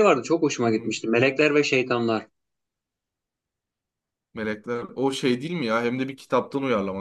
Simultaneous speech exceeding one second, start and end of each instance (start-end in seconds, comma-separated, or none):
none